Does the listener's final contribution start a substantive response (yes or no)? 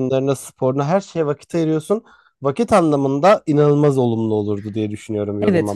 yes